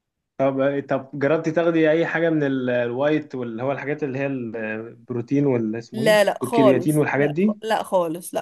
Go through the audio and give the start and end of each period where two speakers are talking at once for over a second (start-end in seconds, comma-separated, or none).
5.9-7.6